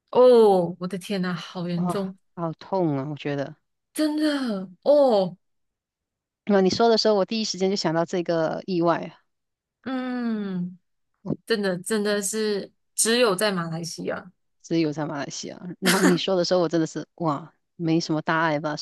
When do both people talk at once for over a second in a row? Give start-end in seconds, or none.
none